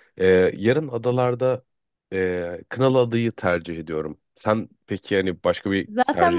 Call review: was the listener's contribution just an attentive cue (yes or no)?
no